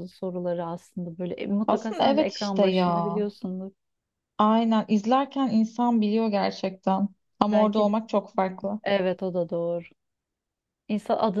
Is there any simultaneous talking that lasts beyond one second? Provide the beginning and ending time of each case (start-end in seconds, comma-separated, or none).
1.7-3.2